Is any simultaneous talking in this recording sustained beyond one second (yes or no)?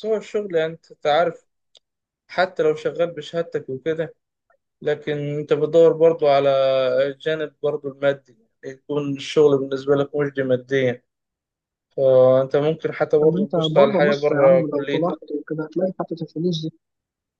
yes